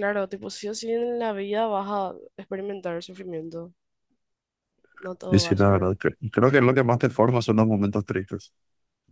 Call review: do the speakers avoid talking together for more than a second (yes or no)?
yes